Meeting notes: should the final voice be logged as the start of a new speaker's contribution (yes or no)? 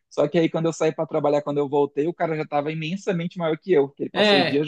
yes